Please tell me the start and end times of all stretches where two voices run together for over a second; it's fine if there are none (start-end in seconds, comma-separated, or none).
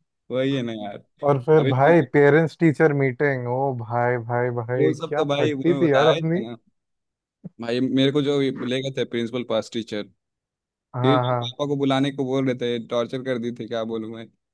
4.8-6.4